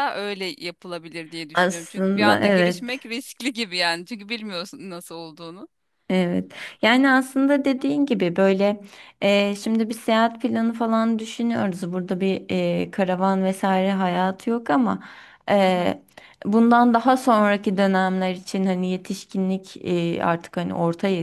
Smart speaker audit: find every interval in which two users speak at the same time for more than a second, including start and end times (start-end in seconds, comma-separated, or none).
1.5-3.0